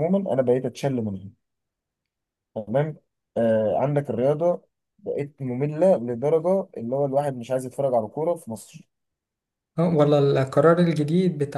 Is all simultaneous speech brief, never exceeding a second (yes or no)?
yes